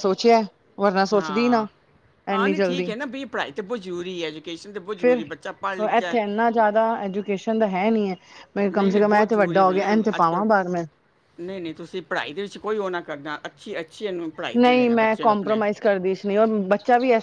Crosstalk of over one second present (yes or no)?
yes